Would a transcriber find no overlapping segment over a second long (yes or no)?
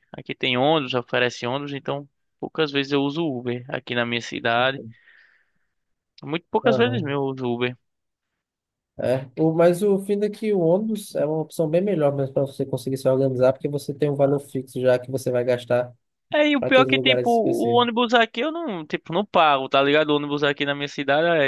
no